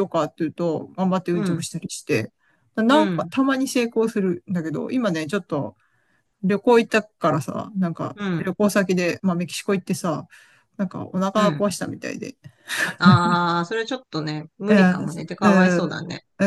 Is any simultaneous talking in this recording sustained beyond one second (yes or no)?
yes